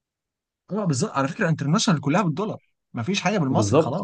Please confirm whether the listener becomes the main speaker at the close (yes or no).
yes